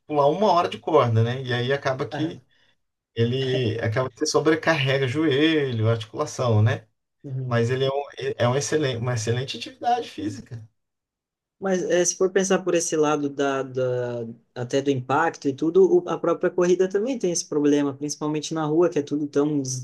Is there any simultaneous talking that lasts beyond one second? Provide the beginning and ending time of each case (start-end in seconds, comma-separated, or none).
none